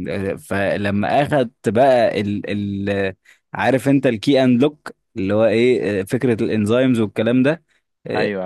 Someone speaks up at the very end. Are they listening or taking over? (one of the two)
listening